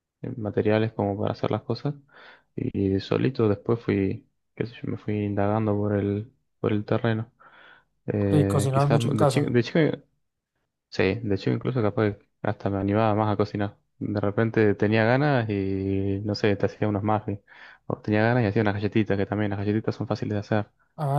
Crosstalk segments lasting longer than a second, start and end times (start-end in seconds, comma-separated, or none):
8.2-9.6